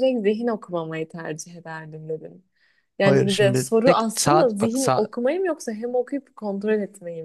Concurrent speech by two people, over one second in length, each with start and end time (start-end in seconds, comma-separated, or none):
3.0-5.1